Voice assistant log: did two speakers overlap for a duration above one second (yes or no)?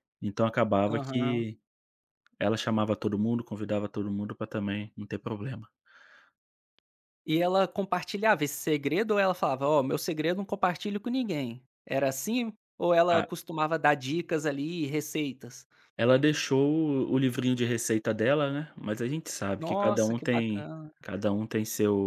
yes